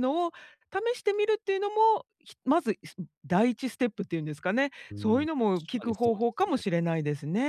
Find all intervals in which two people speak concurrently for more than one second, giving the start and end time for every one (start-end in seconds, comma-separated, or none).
4.9-6.6